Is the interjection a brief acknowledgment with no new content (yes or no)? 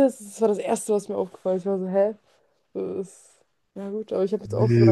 no